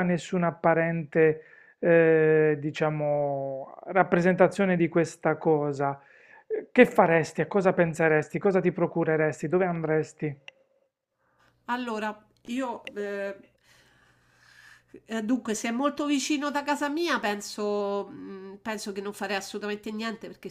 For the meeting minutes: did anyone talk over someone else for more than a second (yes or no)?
no